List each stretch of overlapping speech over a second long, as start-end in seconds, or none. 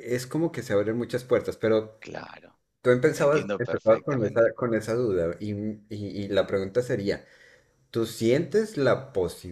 3.1-4.5